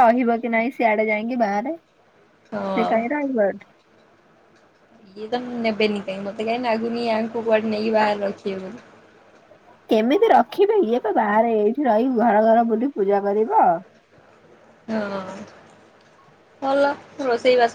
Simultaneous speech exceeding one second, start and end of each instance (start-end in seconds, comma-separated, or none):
none